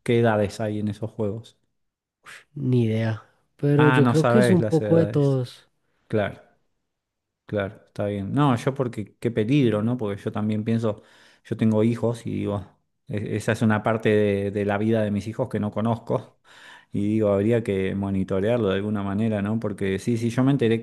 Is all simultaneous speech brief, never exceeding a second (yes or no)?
no